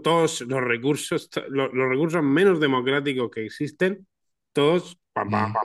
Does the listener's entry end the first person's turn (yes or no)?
no